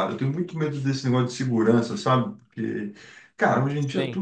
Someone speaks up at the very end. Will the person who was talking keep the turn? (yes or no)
yes